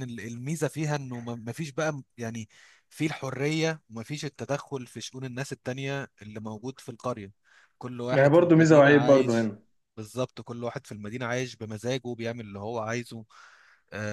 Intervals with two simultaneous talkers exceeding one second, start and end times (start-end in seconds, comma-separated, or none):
8.1-9.5